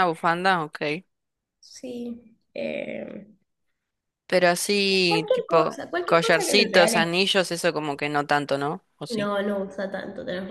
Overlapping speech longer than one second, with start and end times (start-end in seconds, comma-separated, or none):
5.1-7.1